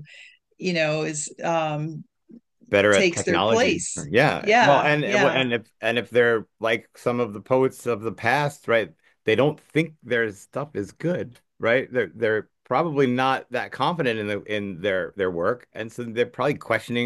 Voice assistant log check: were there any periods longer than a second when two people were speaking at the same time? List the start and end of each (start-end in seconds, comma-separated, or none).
2.9-5.5